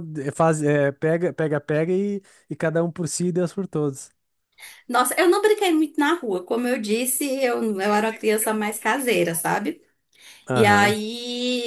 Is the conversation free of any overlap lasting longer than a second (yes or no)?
no